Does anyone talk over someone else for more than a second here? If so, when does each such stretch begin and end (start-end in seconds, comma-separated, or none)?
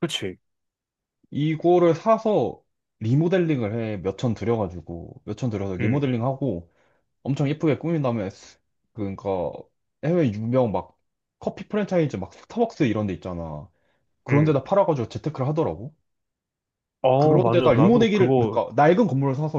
17.2-18.6